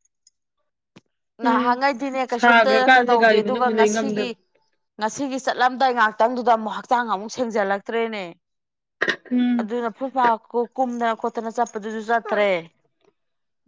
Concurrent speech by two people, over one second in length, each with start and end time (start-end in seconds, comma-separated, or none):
2.3-4.3